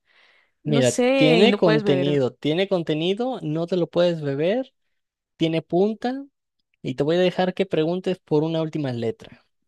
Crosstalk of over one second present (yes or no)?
yes